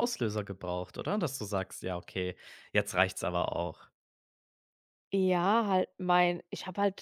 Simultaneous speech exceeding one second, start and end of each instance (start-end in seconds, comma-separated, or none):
none